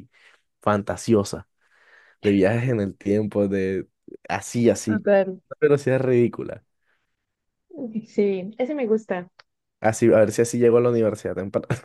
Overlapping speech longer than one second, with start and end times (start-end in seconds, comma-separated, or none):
none